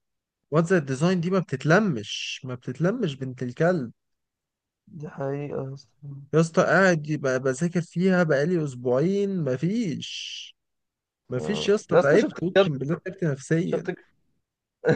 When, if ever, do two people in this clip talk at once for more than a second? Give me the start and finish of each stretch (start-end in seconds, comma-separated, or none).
11.4-12.7